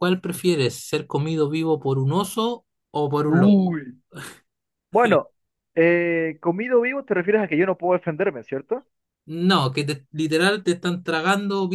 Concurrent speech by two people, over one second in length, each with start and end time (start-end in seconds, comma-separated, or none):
none